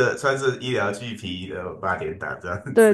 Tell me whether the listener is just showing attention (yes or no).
no